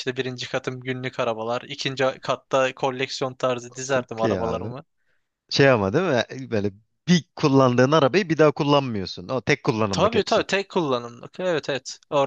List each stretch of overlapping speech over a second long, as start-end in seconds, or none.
none